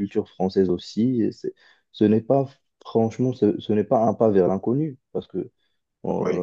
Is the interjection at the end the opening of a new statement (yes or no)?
no